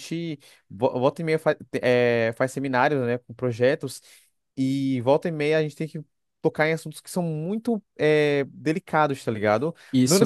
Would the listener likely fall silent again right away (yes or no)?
no